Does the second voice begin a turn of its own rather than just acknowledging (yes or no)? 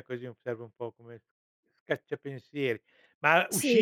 no